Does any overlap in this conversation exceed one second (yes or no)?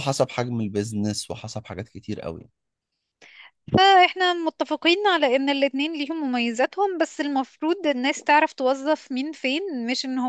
no